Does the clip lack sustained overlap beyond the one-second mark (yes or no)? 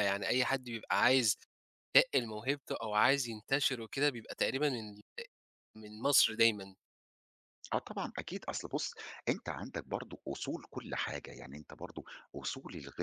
yes